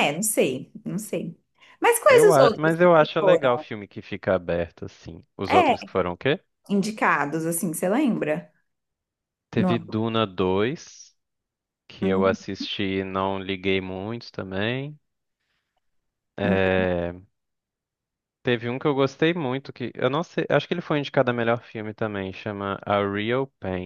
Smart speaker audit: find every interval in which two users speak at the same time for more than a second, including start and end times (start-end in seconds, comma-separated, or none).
2.1-3.7